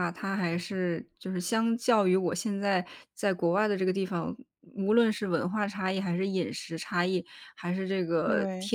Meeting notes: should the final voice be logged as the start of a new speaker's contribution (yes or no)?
no